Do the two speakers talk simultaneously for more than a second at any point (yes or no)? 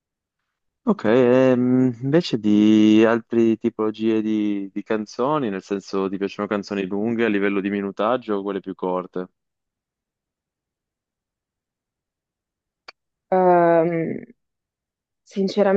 no